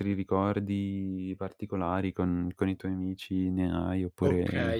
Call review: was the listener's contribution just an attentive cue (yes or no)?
no